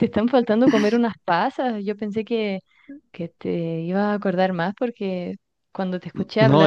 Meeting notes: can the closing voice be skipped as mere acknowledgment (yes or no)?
yes